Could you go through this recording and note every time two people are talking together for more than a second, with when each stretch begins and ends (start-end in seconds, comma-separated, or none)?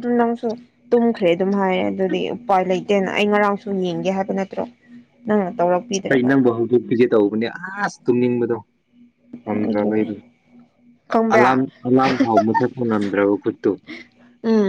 none